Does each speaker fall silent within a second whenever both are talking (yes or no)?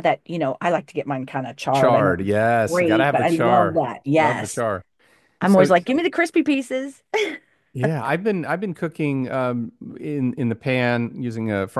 no